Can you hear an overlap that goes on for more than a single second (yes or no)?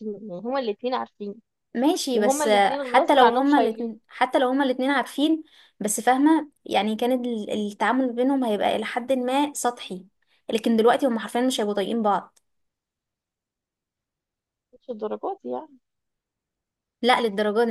yes